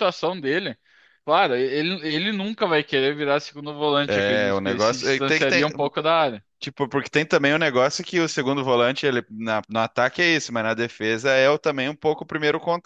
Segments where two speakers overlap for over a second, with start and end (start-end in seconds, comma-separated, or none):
4.1-5.7